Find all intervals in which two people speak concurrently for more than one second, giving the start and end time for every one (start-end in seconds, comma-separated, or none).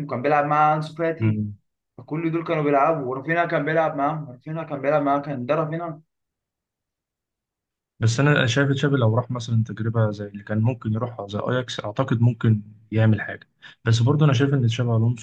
none